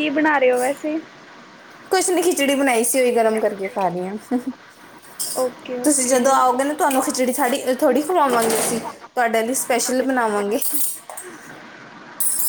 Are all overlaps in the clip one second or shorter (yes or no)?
yes